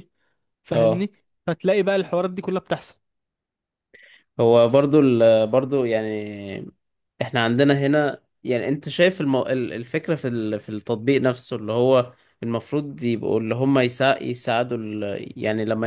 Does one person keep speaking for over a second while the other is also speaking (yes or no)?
no